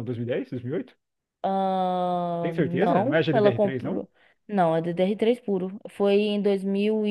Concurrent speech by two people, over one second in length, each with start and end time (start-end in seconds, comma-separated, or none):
2.4-4.0